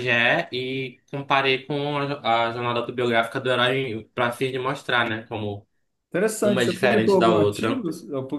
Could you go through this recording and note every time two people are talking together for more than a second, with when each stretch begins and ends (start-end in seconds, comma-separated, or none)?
6.4-7.8